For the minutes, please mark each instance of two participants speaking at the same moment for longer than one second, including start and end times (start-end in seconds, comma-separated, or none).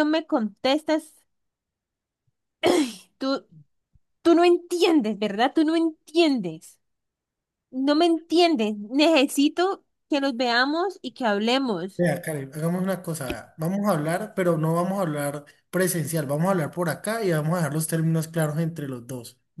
none